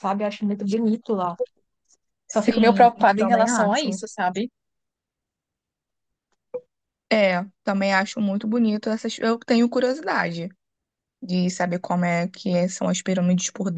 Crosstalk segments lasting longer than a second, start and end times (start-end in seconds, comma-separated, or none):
2.3-4.0